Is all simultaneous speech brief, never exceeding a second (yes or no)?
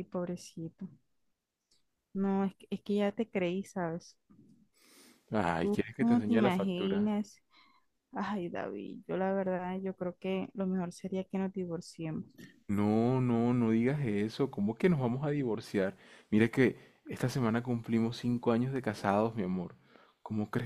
no